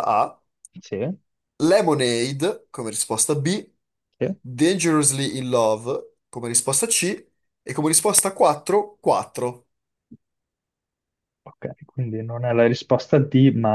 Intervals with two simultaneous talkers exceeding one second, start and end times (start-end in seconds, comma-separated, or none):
none